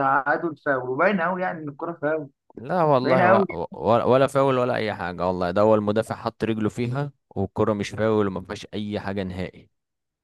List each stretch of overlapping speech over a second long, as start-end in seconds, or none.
none